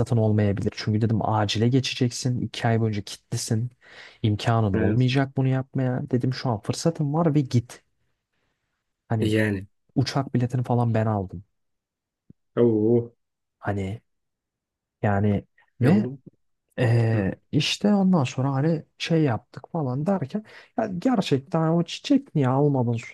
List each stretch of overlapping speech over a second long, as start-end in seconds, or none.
none